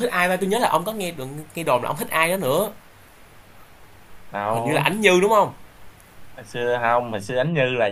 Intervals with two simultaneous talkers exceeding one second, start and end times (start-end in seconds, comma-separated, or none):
none